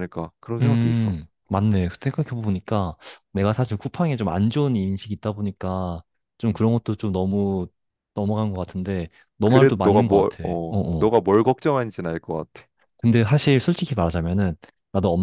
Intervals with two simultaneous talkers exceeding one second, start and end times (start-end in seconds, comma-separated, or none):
9.4-11.1